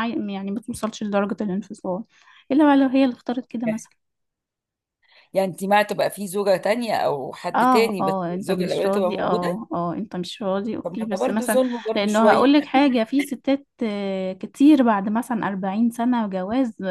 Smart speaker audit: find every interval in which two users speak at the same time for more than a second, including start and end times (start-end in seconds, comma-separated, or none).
7.5-9.6, 10.8-12.5